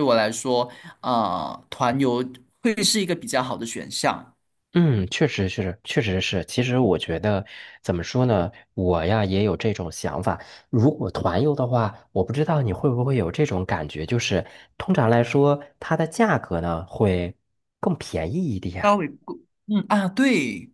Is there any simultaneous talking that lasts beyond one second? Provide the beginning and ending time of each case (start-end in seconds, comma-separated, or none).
none